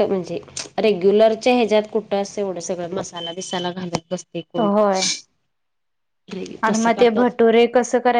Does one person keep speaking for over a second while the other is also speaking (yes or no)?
no